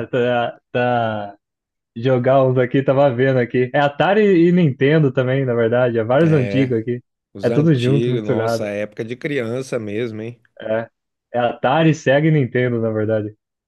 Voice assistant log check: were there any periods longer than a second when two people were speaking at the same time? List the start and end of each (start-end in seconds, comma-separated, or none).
7.4-8.7